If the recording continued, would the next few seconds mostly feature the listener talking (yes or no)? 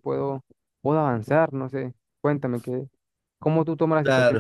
no